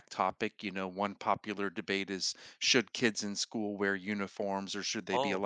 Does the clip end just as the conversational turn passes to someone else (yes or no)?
no